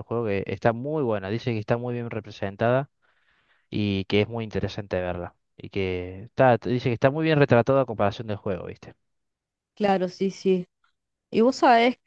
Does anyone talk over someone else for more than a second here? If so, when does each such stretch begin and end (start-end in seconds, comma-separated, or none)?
none